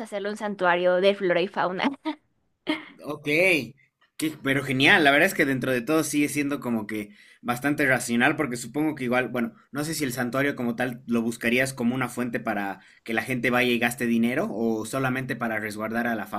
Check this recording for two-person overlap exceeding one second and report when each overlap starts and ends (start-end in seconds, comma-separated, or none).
none